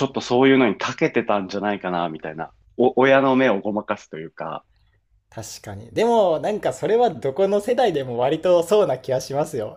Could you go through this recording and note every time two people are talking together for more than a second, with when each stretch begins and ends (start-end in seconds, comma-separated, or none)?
none